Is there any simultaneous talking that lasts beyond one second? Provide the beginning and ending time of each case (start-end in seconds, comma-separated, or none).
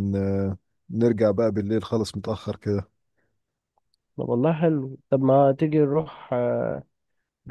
none